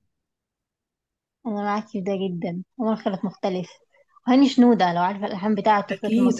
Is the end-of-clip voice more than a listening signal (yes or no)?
yes